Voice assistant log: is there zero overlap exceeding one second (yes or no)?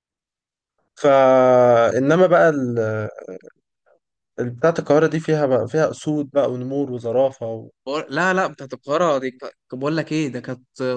yes